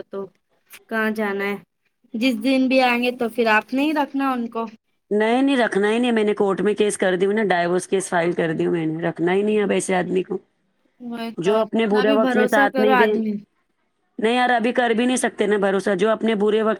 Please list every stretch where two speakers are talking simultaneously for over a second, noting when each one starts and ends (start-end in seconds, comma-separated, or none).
11.4-13.1